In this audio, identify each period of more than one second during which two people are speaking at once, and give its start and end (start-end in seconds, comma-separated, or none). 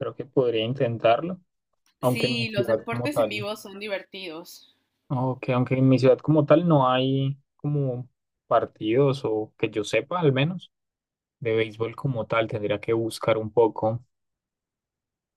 2.0-3.5